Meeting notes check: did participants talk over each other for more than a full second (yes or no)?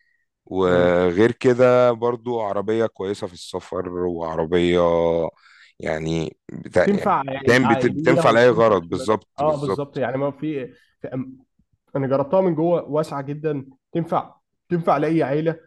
yes